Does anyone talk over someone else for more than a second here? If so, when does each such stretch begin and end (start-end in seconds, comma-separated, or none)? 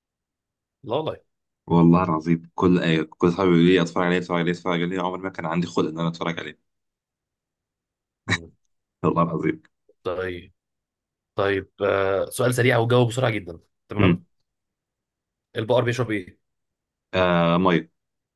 none